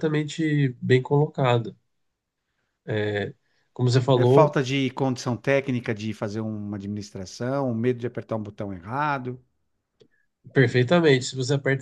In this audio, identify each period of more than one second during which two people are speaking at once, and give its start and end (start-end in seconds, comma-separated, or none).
none